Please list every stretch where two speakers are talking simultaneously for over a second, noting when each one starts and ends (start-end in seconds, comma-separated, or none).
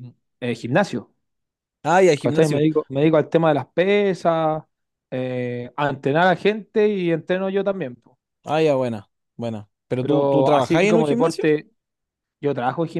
10.0-11.5